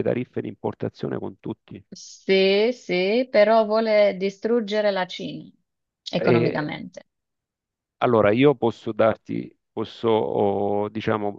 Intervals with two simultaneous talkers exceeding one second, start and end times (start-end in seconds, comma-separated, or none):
none